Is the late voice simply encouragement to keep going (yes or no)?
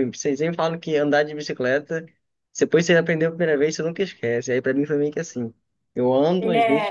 yes